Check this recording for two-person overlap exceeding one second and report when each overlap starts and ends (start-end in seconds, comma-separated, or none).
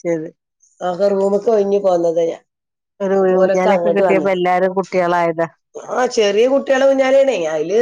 none